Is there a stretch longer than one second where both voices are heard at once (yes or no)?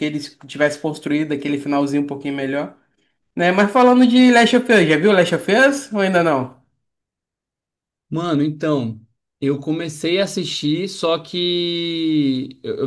no